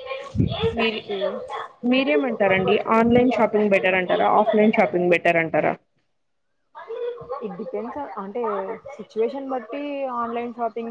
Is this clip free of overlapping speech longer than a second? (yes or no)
no